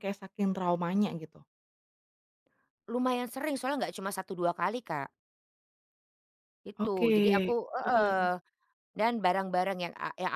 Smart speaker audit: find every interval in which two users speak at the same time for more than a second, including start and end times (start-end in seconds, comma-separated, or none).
none